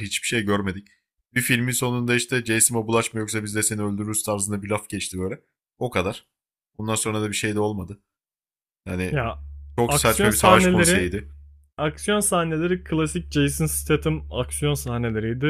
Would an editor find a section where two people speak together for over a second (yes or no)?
yes